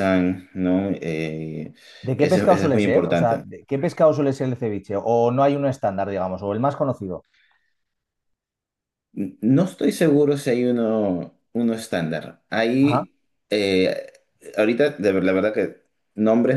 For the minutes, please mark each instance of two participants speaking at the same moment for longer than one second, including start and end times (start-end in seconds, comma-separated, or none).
2.1-3.5